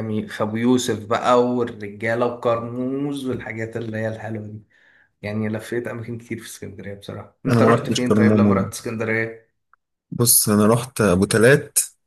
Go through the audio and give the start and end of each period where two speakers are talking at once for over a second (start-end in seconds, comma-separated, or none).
7.5-8.7